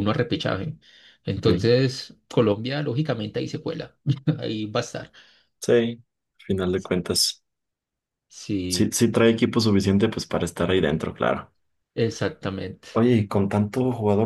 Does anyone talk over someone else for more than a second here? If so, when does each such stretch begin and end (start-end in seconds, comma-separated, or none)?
none